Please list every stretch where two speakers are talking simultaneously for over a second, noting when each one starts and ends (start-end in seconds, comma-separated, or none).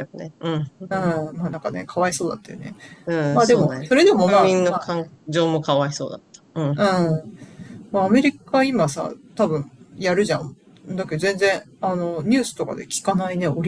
3.3-4.9